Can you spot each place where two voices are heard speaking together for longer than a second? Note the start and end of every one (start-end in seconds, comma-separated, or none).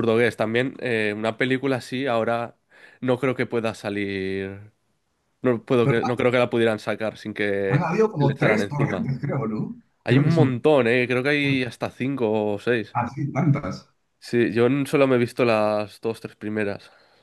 7.7-9.1